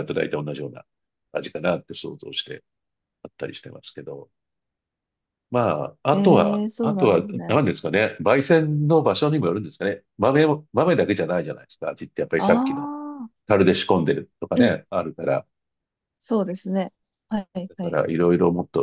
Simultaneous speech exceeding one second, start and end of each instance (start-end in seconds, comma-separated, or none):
6.1-7.6